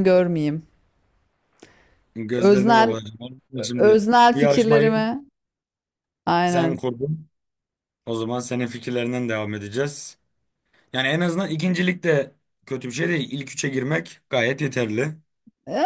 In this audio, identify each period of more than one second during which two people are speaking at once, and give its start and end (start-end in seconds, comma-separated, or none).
3.7-5.1